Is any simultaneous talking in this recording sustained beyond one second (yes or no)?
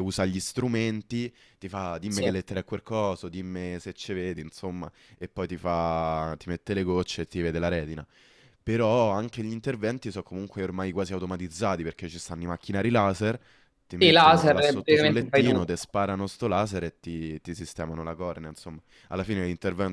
yes